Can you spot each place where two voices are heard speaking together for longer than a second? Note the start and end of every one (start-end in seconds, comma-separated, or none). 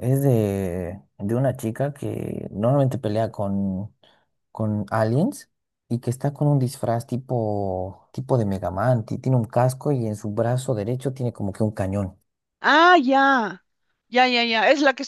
none